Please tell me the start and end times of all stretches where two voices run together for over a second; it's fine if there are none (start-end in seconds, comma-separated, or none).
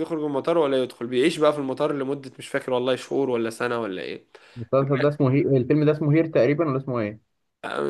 none